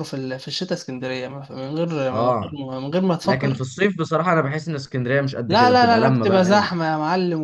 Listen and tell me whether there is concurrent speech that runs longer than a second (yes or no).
yes